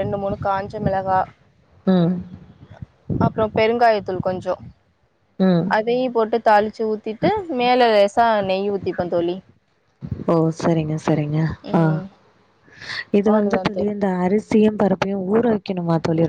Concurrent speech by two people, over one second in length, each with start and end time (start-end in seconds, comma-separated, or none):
none